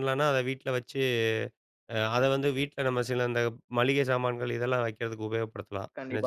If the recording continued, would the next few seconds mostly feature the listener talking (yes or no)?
yes